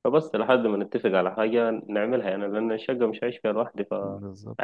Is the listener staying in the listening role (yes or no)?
no